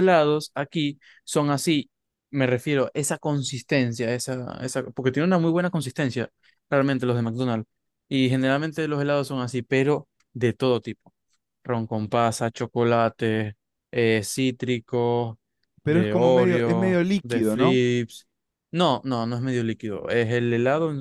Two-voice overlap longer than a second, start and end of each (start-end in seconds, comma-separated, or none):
15.9-17.8